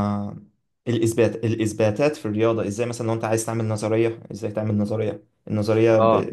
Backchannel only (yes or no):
yes